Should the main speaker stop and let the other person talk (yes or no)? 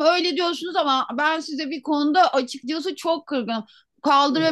no